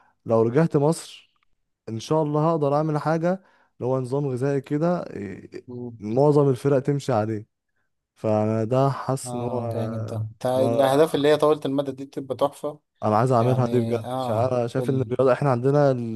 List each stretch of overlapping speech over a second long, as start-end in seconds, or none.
9.3-11.0, 13.4-15.1